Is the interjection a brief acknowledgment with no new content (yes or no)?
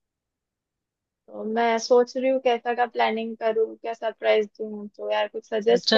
no